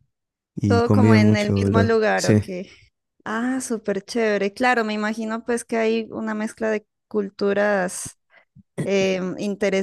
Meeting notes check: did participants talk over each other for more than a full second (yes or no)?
yes